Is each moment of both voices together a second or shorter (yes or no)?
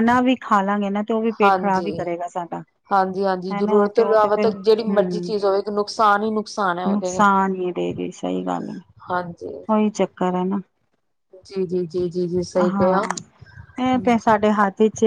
no